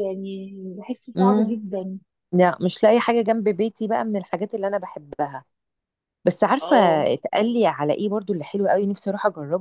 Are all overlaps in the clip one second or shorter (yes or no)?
yes